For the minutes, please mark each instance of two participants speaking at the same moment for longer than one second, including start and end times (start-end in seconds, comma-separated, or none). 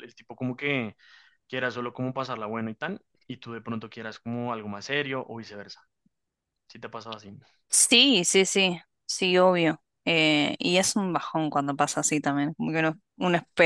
none